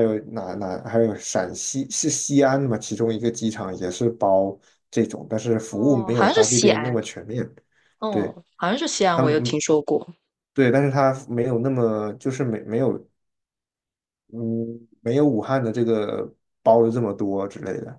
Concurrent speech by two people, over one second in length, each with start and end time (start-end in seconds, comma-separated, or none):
5.7-7.0